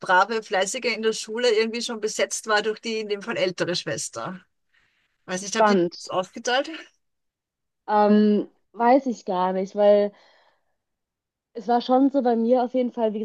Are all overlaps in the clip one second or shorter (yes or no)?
yes